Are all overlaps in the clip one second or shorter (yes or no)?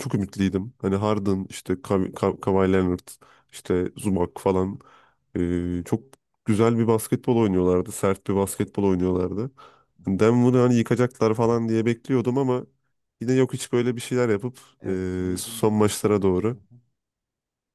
no